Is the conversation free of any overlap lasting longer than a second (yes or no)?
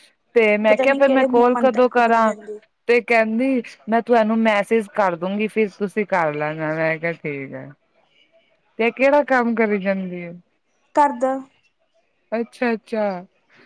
no